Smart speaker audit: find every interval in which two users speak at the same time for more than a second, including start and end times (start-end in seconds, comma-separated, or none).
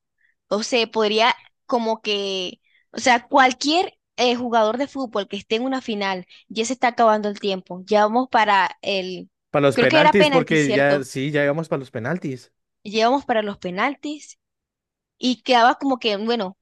9.7-11.1